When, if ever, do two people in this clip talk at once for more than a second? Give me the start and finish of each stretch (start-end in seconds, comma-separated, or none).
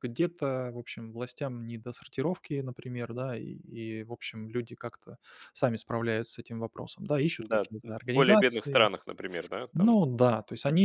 7.4-8.9